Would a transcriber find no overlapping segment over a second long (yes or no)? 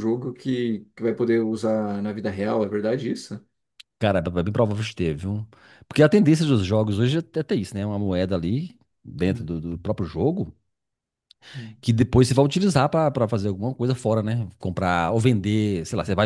yes